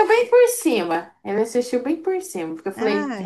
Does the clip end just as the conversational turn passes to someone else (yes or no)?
no